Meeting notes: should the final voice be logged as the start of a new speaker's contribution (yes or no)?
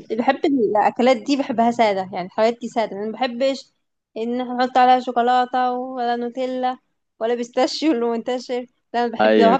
no